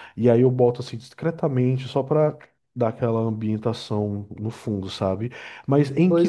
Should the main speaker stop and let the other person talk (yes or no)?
no